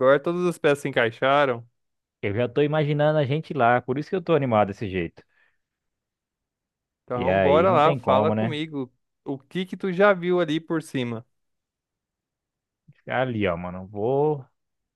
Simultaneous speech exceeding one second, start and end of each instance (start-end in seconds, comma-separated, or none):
7.2-8.6